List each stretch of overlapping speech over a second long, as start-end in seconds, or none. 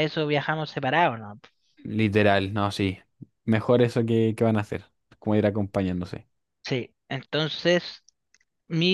none